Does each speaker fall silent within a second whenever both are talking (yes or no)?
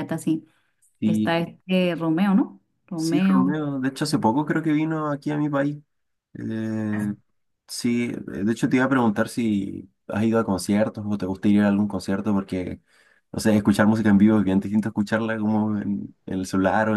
yes